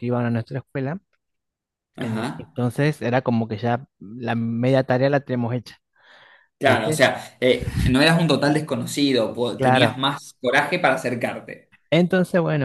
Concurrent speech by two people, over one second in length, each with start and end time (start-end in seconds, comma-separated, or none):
none